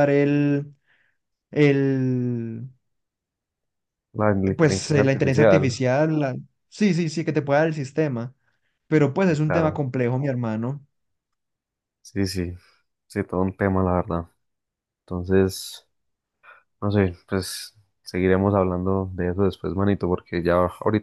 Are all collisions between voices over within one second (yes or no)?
no